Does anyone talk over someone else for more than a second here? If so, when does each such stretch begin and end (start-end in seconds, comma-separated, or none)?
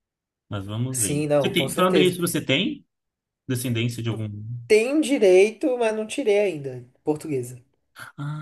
0.9-2.1